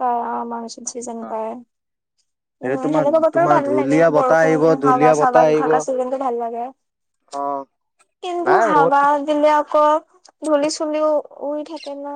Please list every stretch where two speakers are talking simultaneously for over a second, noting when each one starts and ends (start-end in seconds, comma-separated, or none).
2.7-5.7